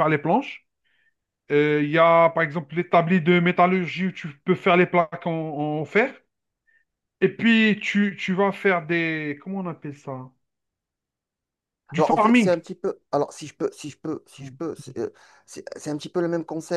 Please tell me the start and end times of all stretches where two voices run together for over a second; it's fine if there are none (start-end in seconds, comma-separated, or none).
none